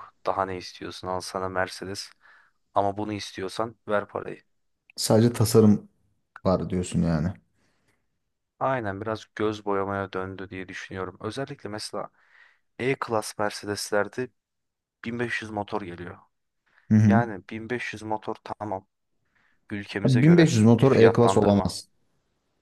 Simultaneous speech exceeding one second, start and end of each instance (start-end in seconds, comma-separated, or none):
20.0-21.8